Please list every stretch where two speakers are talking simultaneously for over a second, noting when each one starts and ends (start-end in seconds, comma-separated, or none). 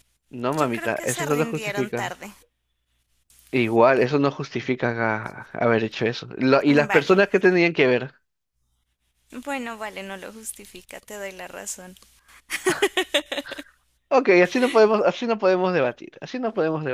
0.6-2.1